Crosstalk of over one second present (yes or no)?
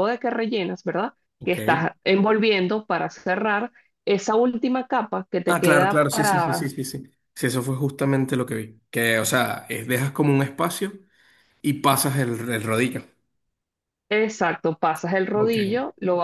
yes